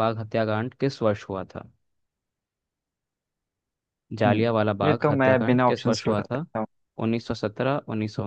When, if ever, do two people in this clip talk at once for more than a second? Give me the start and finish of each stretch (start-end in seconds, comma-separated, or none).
4.2-6.4